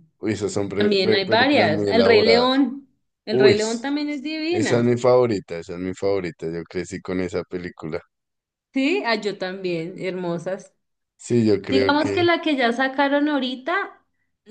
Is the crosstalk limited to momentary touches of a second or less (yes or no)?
no